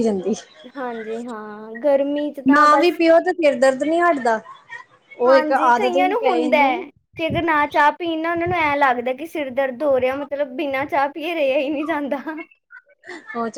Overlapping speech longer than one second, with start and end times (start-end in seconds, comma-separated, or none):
5.3-6.7